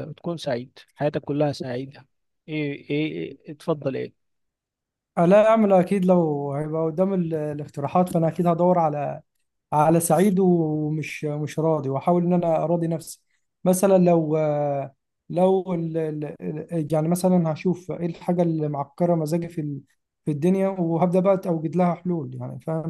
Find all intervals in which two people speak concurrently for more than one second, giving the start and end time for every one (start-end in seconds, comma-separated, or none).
none